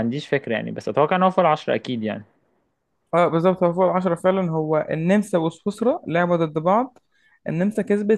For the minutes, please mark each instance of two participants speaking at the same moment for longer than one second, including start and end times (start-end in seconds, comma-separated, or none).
none